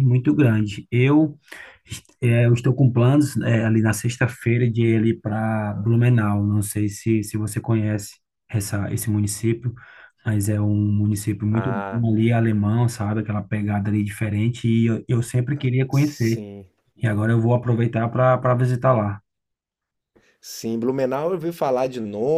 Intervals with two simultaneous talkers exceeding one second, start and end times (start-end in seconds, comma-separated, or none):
none